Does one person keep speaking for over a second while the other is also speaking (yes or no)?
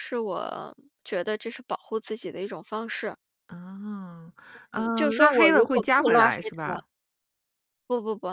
yes